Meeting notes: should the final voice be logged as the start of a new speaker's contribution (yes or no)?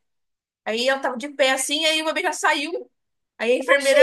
no